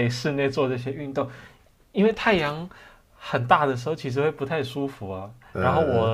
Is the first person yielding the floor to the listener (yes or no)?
no